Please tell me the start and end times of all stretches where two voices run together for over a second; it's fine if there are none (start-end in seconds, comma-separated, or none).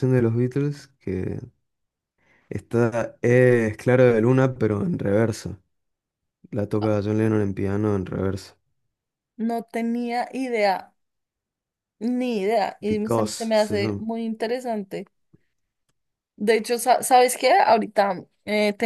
12.8-14.0